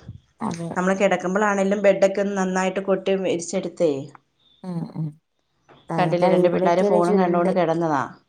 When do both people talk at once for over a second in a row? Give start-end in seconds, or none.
6.0-7.5